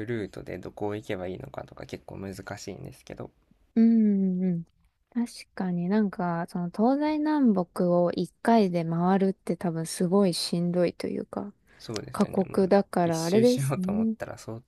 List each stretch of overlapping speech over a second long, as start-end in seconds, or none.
12.1-14.2